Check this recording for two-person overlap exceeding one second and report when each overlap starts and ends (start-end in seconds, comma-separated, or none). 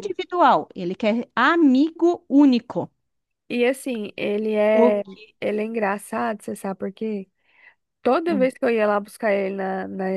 none